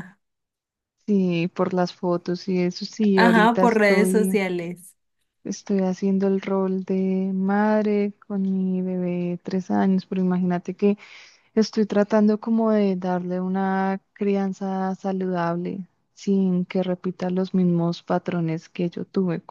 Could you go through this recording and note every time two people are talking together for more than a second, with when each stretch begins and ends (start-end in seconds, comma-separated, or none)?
3.1-4.4